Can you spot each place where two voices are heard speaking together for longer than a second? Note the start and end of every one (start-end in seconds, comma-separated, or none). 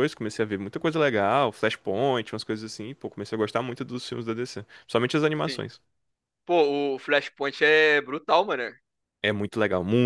none